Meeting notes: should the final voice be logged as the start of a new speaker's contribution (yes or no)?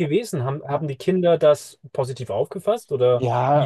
yes